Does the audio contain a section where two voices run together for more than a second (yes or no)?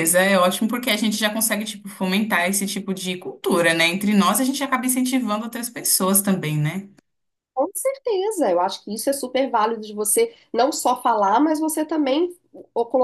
no